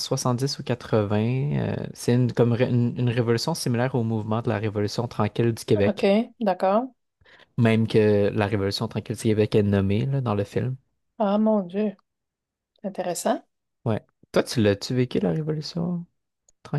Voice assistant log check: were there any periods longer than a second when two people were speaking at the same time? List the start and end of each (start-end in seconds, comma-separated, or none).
none